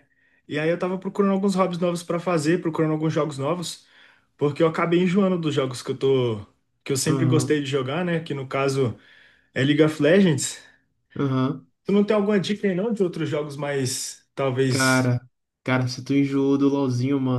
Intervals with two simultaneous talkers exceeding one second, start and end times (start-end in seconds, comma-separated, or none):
none